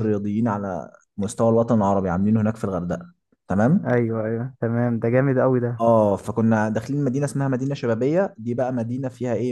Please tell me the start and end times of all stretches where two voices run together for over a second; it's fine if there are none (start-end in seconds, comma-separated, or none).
none